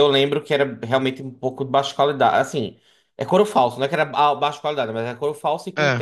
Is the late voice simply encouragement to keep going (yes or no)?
yes